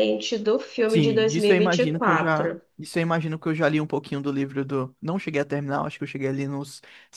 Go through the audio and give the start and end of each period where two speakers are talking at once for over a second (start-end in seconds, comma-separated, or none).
0.9-2.6